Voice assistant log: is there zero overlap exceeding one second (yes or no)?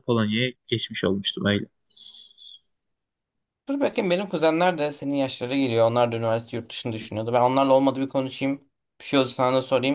yes